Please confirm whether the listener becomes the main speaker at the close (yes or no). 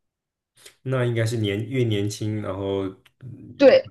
yes